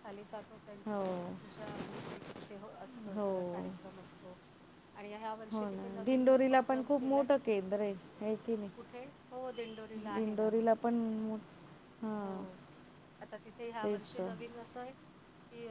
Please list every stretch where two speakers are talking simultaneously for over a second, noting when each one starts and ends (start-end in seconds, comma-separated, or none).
5.5-7.3